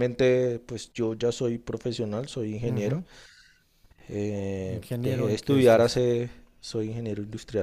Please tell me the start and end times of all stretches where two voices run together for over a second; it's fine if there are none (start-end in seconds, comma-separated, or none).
4.7-6.0